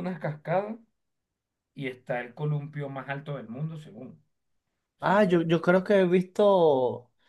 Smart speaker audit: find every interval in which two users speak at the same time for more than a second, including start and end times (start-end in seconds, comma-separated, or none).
none